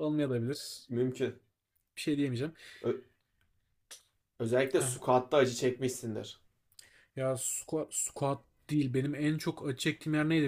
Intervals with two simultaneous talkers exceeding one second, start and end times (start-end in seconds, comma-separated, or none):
none